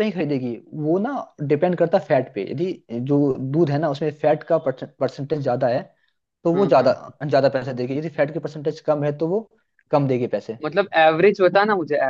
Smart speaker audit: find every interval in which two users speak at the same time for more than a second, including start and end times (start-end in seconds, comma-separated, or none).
none